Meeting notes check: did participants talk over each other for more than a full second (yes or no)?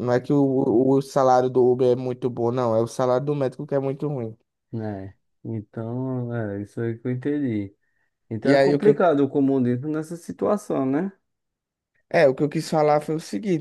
no